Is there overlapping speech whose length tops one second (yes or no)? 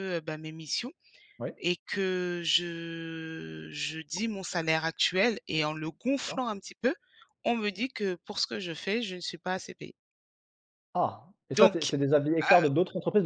no